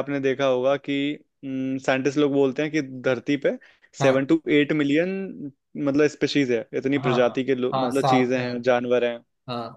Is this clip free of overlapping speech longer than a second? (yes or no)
no